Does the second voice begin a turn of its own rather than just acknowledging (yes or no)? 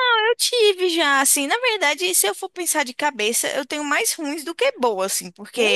no